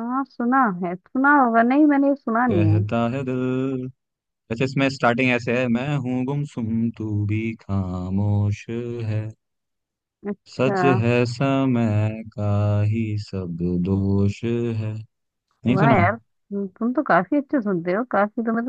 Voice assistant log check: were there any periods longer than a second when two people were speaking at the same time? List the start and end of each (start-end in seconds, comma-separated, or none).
none